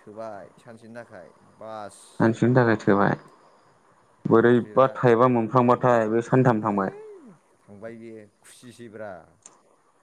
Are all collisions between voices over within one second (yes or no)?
yes